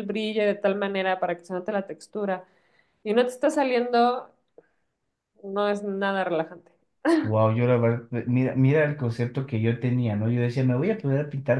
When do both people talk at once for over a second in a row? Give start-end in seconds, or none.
none